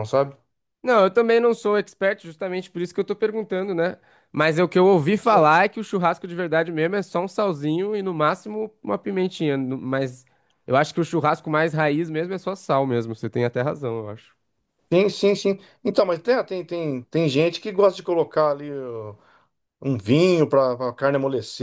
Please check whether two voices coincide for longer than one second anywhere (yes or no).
no